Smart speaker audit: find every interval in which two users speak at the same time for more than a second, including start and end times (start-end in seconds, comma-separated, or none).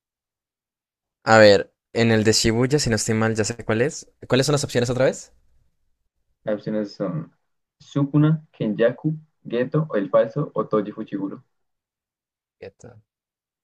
none